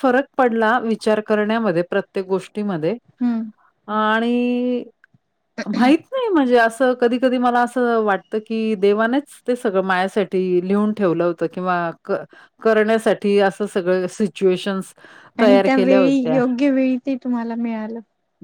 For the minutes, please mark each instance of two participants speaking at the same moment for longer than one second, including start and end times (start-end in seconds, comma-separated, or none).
none